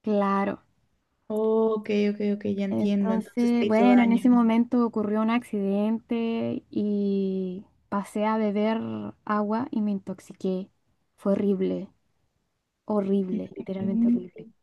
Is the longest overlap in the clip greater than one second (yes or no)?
yes